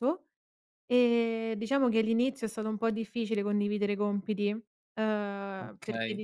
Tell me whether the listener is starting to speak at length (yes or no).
yes